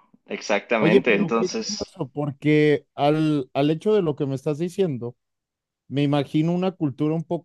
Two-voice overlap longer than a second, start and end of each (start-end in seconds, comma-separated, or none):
0.8-2.0